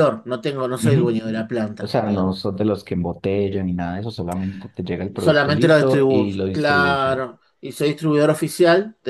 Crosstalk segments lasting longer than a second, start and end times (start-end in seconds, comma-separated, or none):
5.2-7.2